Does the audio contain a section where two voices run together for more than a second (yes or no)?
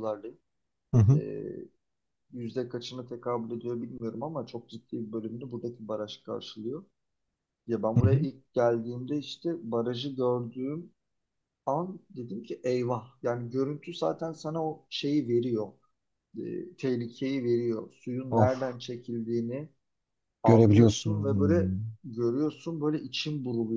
yes